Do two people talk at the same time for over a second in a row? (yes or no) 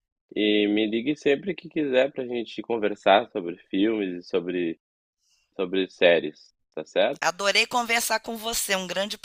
no